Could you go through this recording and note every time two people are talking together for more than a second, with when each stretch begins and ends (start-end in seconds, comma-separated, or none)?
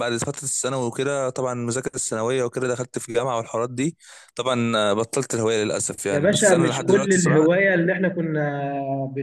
6.1-7.5